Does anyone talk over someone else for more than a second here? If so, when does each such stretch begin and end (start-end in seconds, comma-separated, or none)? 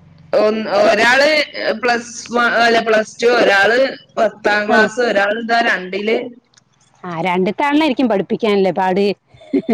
none